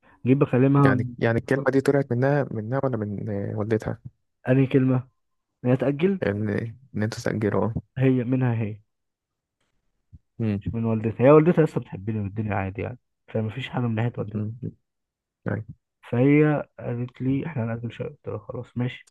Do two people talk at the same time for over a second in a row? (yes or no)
no